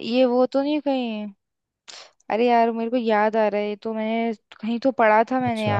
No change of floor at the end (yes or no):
no